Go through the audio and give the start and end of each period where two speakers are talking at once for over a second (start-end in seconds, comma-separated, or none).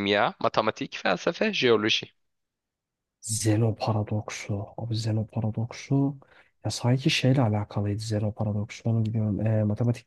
none